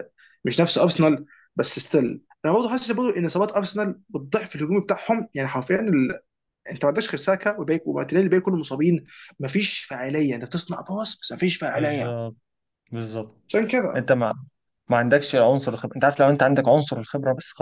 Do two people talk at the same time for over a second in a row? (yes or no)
no